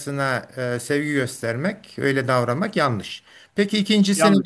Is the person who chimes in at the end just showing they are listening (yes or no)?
yes